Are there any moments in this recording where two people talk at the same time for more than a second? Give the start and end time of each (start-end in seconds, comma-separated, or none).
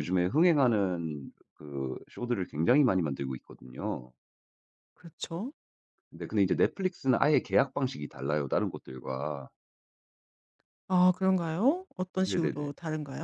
none